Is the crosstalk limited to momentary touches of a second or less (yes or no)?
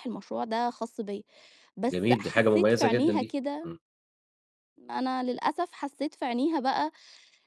no